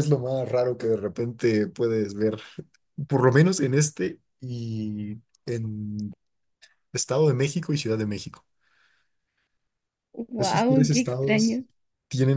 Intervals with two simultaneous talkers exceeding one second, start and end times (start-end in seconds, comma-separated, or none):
10.4-11.6